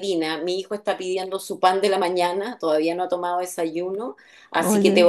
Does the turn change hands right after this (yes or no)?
no